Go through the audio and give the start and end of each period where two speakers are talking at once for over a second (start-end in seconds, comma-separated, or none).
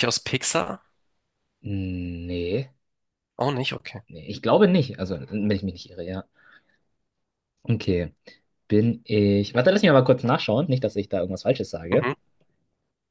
none